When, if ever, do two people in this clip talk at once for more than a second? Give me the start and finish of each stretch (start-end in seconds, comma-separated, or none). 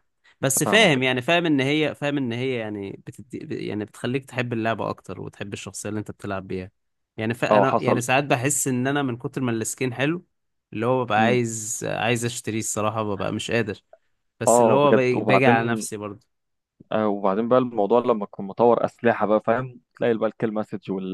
14.5-15.9